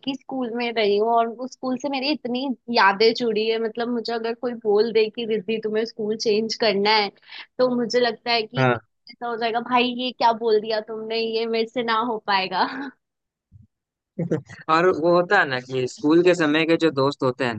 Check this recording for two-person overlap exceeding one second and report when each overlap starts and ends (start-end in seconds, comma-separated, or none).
none